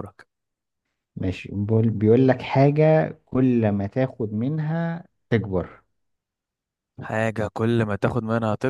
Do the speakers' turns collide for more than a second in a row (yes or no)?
no